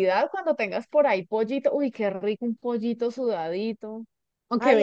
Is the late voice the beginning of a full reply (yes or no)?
yes